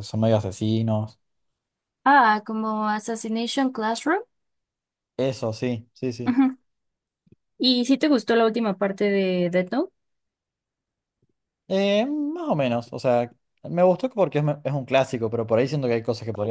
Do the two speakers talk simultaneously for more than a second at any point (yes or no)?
no